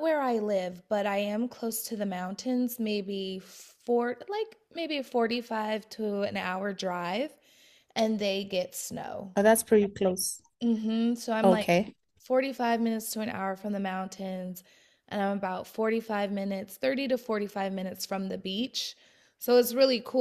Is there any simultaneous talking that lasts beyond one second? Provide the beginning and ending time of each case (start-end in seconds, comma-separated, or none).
none